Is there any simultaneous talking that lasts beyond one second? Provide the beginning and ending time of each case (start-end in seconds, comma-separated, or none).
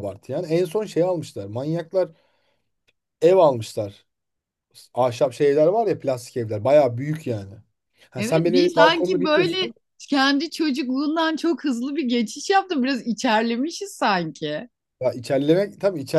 8.2-9.7